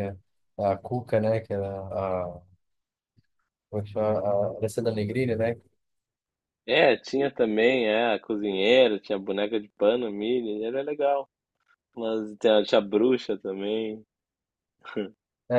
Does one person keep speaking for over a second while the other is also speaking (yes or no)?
no